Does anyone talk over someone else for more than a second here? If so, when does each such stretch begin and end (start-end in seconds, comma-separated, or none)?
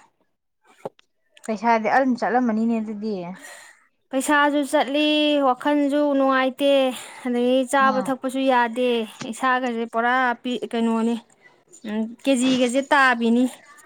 none